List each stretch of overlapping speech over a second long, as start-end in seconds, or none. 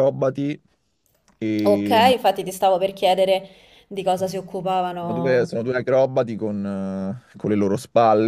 none